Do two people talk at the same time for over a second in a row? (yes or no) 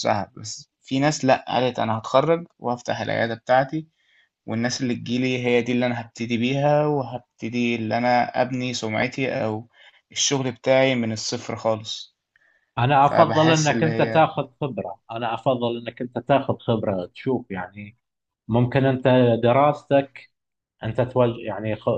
yes